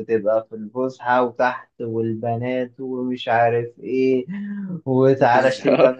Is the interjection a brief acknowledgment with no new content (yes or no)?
yes